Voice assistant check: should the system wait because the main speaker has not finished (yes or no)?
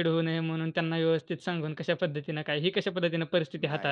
no